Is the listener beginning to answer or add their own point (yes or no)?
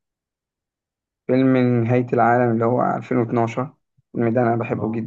yes